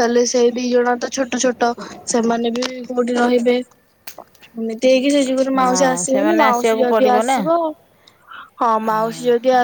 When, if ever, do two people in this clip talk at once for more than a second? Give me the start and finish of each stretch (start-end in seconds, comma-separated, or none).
5.6-7.4